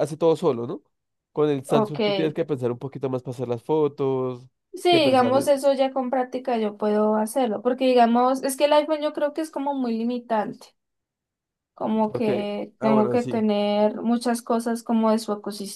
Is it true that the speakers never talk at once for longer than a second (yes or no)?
no